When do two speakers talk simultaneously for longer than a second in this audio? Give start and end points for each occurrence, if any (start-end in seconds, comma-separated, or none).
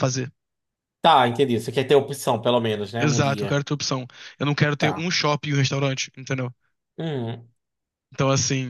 none